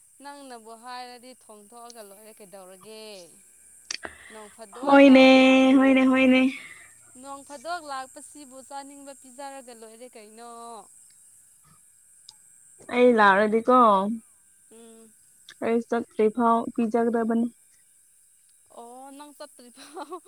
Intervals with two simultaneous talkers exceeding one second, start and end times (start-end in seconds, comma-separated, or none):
none